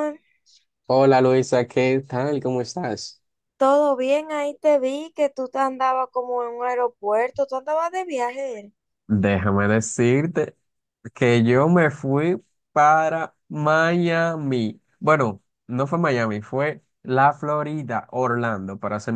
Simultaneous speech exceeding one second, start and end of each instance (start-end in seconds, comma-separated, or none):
none